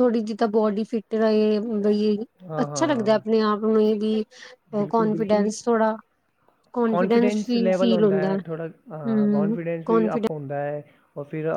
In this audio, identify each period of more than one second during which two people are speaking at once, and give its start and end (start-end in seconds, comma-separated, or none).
6.9-10.3